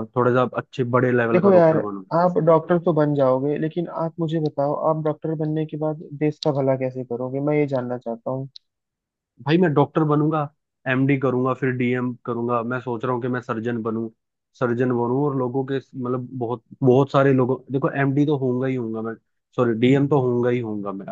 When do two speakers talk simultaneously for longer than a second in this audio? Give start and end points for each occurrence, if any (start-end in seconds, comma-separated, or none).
none